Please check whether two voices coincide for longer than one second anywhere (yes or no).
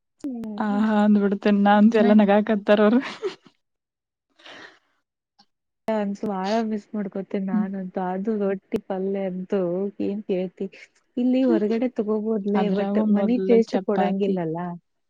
yes